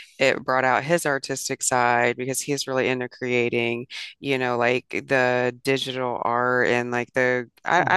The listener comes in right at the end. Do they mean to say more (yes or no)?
no